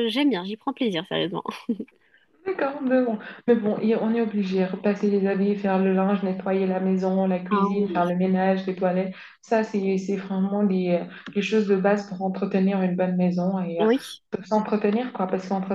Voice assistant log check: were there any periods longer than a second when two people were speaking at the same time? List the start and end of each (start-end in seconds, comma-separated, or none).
none